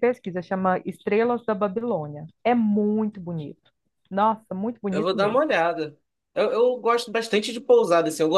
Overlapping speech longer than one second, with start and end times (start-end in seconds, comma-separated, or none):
none